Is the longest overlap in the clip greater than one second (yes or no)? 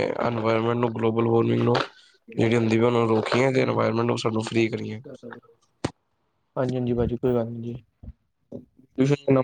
no